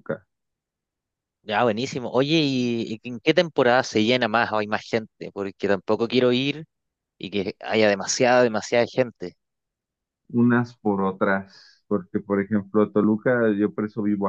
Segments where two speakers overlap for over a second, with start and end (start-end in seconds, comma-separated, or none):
none